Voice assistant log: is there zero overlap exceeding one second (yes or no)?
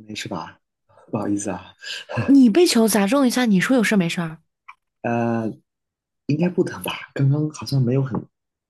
yes